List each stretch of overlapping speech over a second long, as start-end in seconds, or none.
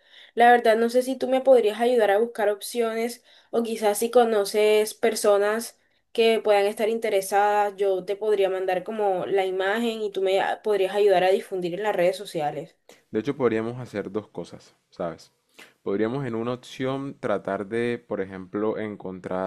none